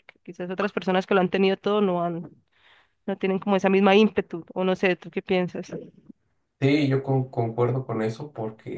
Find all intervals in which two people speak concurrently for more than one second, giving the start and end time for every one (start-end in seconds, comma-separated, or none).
none